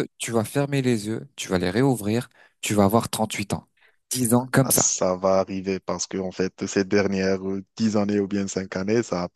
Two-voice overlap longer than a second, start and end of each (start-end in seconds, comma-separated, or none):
none